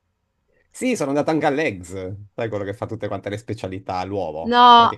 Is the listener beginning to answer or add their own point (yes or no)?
no